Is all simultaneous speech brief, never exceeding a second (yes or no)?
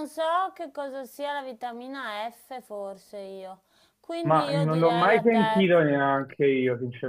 no